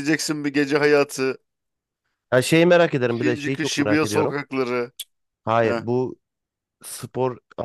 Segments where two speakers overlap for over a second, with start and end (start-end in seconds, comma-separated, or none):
3.1-4.3